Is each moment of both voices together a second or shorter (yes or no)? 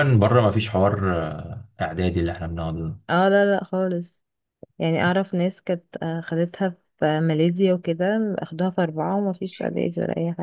yes